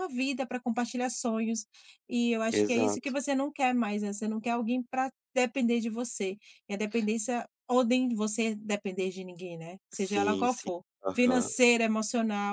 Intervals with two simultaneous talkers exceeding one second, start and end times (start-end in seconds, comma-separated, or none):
10.0-11.5